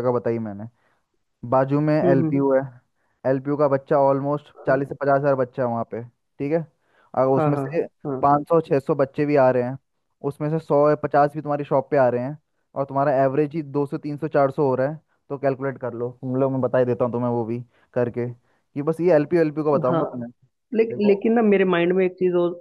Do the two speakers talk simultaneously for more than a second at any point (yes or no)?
no